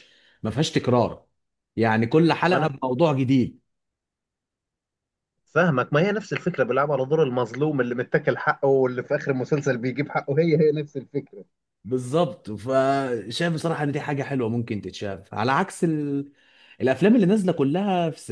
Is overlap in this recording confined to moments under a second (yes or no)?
yes